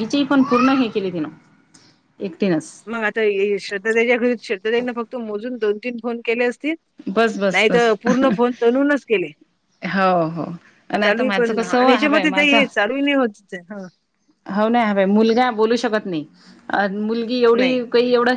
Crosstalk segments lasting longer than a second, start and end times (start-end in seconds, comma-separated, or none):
11.0-12.6